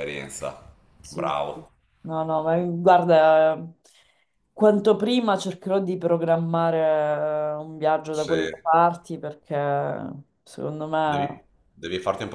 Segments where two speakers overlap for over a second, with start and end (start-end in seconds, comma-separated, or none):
none